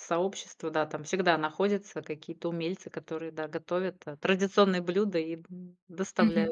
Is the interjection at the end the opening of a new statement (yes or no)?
yes